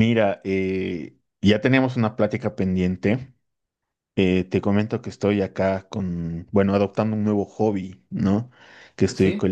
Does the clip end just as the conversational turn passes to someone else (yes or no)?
no